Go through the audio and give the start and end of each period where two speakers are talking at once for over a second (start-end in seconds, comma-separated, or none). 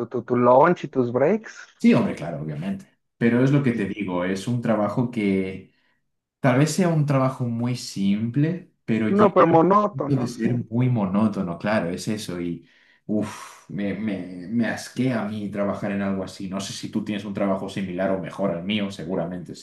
9.1-10.5